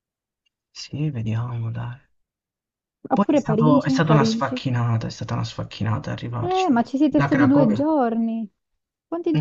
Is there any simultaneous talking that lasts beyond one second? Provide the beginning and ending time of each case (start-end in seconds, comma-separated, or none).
3.1-4.6, 6.4-7.9